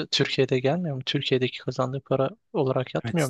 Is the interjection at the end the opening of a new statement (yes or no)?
yes